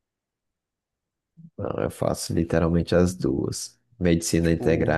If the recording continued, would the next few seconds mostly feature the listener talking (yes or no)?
no